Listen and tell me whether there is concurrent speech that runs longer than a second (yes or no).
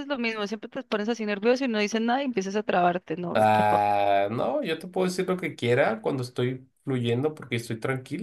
no